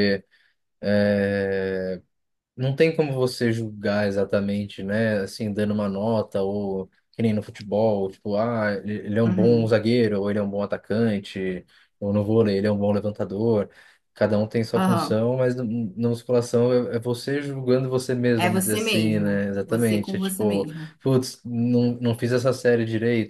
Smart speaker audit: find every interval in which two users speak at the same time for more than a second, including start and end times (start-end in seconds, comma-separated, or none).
18.4-20.9